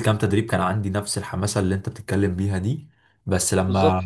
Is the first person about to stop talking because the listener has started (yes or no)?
no